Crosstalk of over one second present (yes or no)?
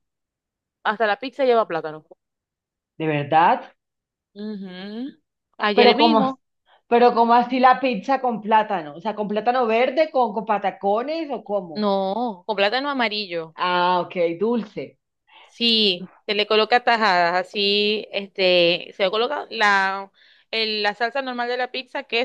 no